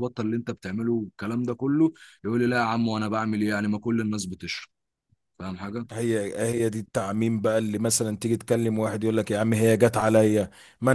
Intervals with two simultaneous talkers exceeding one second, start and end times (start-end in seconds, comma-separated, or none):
none